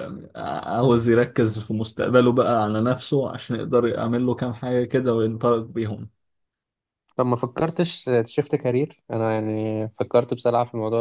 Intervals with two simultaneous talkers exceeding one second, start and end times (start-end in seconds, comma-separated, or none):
none